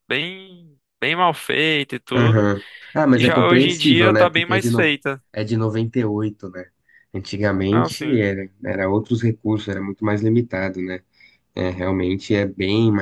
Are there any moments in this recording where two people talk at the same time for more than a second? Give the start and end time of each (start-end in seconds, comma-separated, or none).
3.1-4.9